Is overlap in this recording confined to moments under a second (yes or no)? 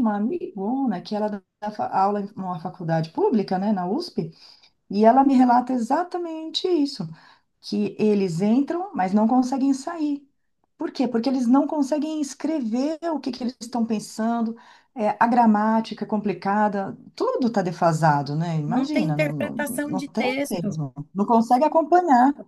no